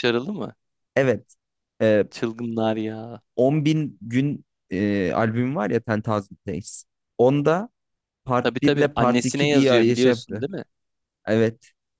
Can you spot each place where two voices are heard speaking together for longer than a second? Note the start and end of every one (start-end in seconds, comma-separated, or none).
8.4-10.4